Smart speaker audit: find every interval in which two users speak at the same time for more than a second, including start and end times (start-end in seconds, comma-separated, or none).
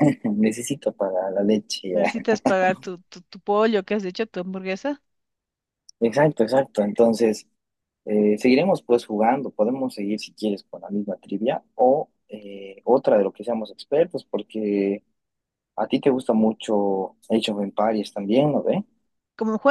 none